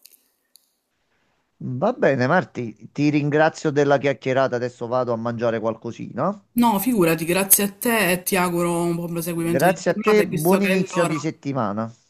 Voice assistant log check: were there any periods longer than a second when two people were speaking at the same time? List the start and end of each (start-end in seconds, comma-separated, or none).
9.3-11.1